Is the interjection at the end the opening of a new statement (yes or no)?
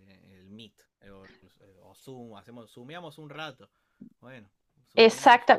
yes